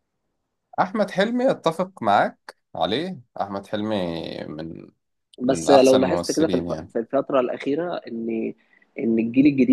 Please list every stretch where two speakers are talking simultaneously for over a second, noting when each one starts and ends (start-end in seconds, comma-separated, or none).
5.5-6.9